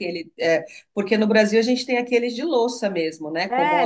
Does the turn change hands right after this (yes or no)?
yes